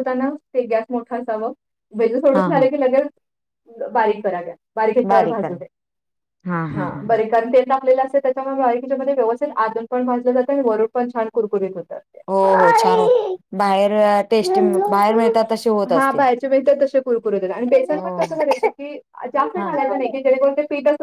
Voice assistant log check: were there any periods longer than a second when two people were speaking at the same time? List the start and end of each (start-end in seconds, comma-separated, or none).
none